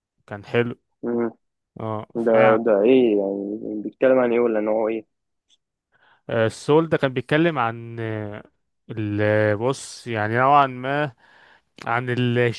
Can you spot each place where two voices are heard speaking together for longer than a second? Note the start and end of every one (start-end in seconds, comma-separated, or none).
none